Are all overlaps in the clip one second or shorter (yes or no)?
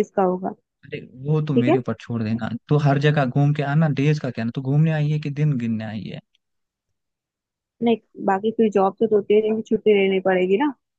yes